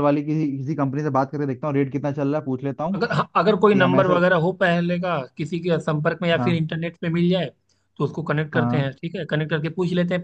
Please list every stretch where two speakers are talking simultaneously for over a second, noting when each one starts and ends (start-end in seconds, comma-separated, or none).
none